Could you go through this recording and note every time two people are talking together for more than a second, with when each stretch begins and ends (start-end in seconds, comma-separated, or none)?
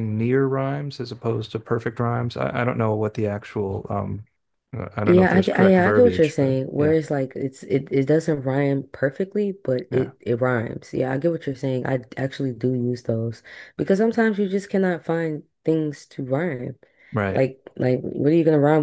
5.0-7.0